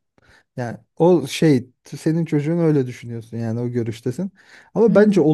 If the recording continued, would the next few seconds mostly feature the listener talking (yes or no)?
no